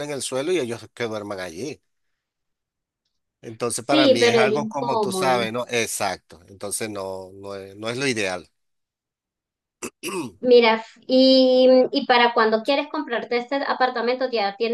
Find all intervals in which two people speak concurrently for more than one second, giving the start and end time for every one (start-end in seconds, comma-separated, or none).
3.7-5.4